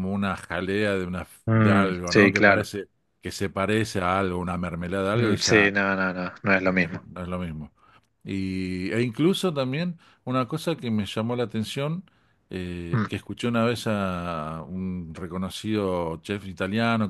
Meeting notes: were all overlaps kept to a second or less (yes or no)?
no